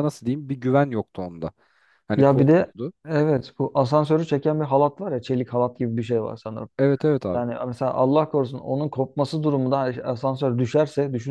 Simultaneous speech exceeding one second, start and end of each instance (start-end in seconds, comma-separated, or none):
none